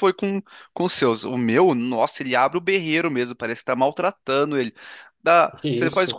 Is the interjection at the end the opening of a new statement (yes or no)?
no